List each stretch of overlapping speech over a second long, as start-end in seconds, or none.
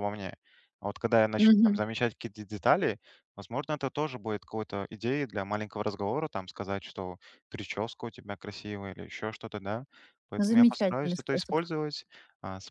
10.4-11.6